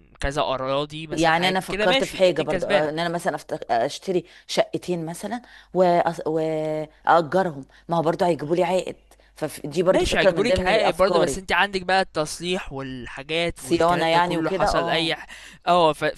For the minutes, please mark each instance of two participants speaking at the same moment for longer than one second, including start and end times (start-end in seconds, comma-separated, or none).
1.1-2.9, 9.9-11.4, 13.5-15.1